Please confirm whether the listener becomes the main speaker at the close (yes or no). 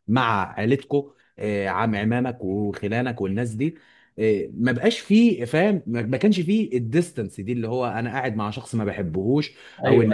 no